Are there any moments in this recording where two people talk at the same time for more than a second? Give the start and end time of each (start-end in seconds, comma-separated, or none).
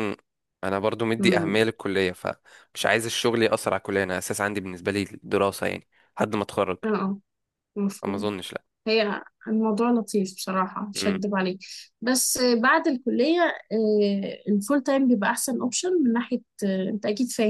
none